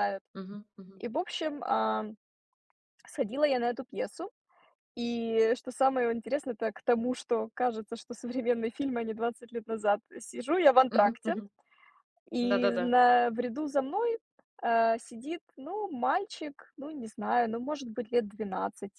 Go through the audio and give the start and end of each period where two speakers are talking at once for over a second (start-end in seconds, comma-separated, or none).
none